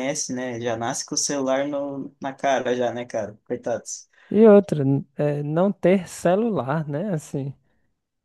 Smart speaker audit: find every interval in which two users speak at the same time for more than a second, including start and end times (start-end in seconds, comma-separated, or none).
none